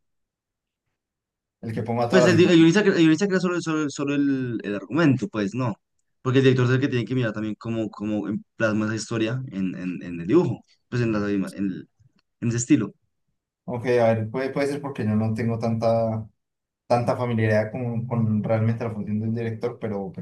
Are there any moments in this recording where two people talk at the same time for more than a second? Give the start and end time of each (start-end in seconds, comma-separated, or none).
none